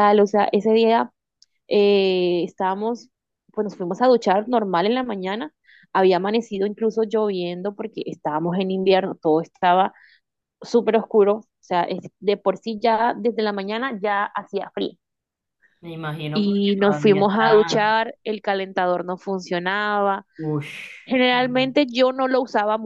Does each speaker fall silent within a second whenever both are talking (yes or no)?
no